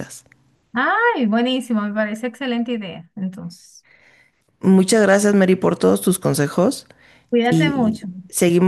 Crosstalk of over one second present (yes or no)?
no